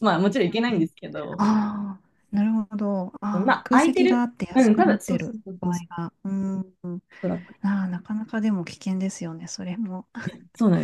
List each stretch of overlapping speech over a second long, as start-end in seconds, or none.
3.5-6.0